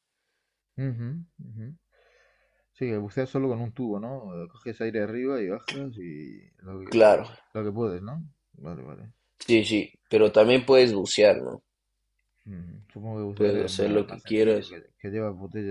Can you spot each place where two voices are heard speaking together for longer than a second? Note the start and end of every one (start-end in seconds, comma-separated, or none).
13.3-14.8